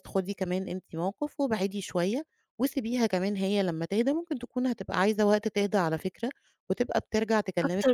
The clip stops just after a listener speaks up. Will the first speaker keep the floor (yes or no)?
no